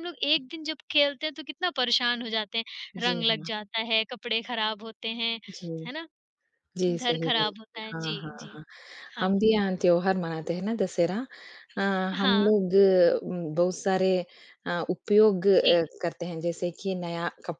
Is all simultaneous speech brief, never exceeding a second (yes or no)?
no